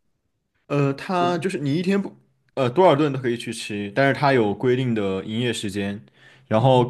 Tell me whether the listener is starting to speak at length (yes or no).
no